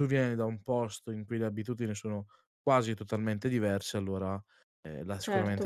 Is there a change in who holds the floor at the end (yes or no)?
yes